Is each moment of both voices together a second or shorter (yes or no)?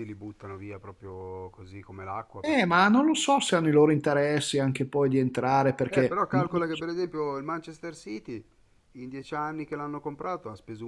yes